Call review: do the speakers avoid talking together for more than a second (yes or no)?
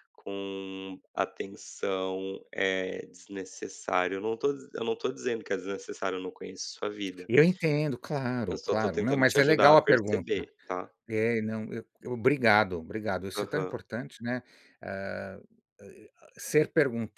no